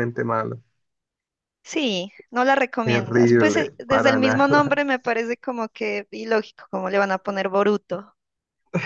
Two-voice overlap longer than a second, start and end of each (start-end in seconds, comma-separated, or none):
2.9-4.8